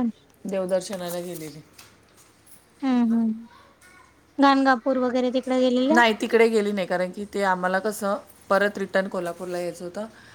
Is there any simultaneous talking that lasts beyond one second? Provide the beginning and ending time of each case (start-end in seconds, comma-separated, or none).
none